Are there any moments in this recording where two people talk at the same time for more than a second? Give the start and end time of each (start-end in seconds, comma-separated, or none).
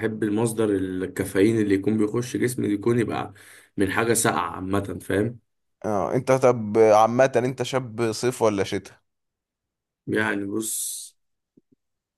none